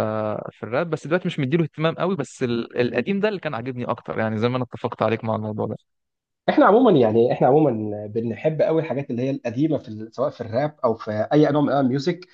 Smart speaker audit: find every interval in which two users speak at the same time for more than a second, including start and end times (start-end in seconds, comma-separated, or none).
none